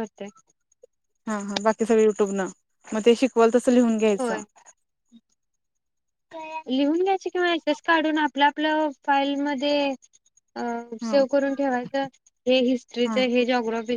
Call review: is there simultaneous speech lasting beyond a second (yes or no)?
no